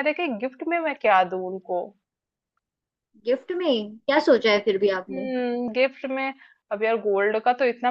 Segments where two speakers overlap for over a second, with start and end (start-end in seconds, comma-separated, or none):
none